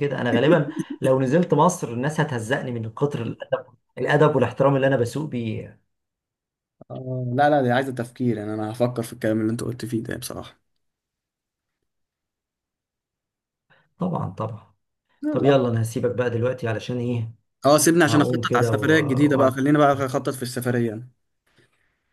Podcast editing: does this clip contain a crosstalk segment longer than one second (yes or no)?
yes